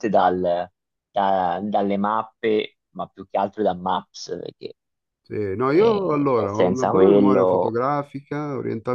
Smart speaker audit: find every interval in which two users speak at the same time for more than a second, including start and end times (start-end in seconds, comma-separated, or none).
5.7-7.8